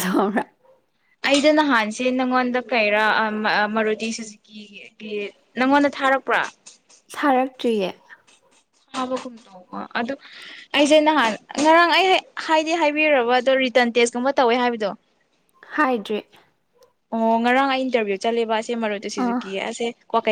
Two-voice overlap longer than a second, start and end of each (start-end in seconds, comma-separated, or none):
none